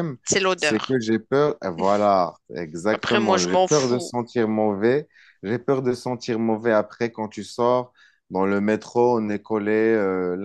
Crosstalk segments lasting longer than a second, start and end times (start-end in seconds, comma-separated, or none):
2.9-4.1